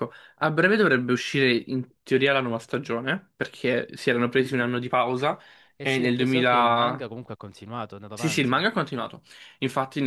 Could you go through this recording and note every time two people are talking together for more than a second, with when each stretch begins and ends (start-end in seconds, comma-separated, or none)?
5.8-7.0